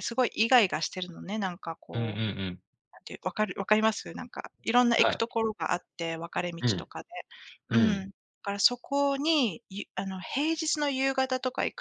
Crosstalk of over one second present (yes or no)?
no